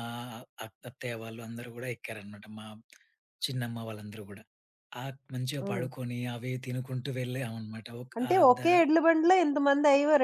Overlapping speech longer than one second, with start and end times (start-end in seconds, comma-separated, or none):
none